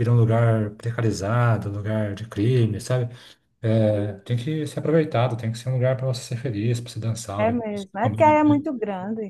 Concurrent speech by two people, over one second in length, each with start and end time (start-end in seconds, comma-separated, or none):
7.4-8.6